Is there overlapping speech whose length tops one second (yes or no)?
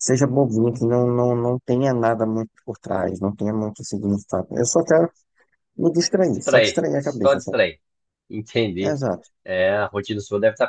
yes